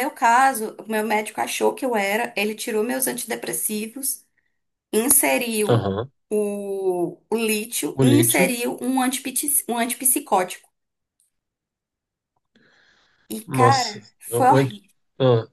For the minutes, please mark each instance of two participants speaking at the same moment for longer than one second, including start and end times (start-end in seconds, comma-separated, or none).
13.5-14.8